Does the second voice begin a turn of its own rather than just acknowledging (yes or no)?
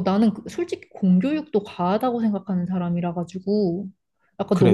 yes